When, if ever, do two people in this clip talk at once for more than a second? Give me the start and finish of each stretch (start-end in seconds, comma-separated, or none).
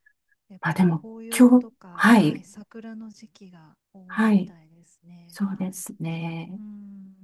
0.6-2.4